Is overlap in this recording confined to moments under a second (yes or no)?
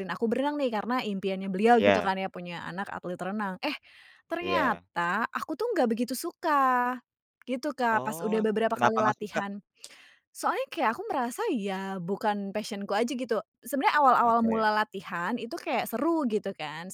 no